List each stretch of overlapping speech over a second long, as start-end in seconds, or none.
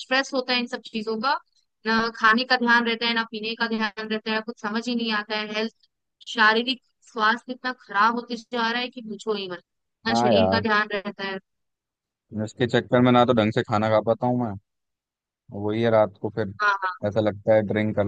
none